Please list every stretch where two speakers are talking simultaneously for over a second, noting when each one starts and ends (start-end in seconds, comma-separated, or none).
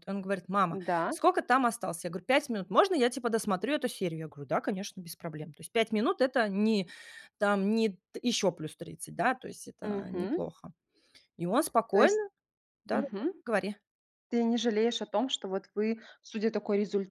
none